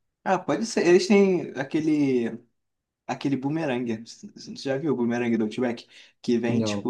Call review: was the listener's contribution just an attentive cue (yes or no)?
yes